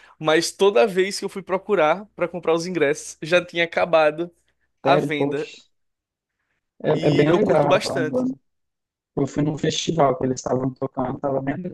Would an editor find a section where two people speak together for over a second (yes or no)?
yes